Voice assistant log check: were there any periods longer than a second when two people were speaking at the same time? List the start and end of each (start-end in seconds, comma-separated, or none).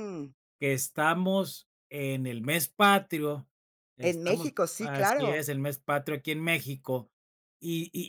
4.0-5.5